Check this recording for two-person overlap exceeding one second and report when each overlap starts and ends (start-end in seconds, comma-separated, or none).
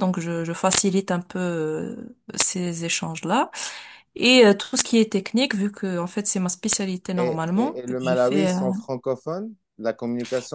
7.2-8.6